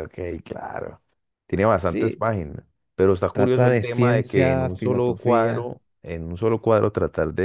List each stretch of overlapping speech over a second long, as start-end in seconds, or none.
3.3-5.7